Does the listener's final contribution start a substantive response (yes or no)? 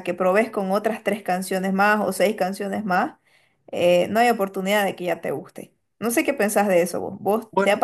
no